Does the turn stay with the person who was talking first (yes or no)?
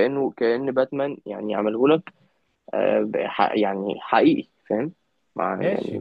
yes